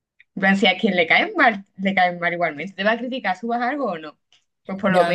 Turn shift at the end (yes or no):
no